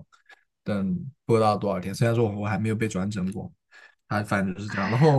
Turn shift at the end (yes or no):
no